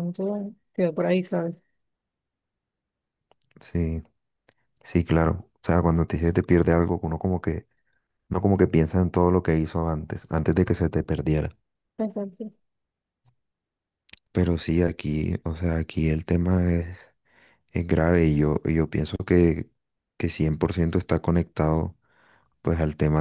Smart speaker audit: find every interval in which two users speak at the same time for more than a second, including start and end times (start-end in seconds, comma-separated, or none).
none